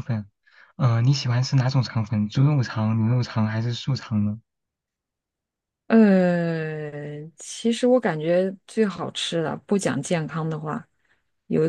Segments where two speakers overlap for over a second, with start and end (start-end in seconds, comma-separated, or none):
none